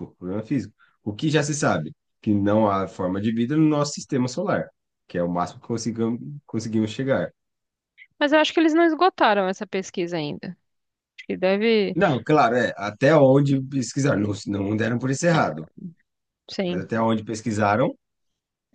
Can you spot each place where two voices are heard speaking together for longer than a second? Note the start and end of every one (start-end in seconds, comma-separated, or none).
none